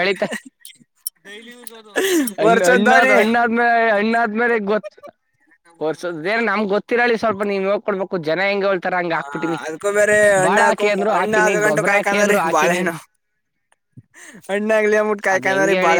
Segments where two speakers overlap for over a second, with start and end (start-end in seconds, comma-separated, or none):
10.4-12.8